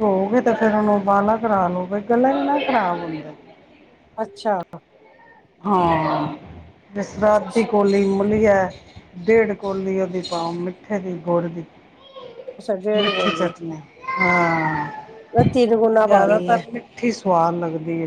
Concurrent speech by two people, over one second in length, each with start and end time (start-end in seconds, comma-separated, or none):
none